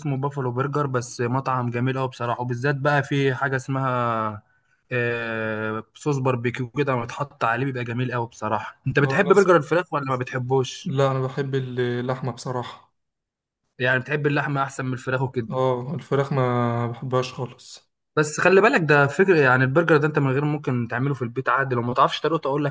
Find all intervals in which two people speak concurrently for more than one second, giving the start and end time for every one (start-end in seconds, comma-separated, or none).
none